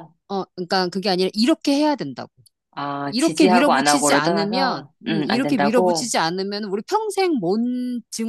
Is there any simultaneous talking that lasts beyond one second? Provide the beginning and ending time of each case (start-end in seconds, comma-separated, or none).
3.1-6.1